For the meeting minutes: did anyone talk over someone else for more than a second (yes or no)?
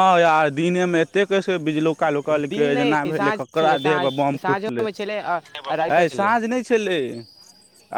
yes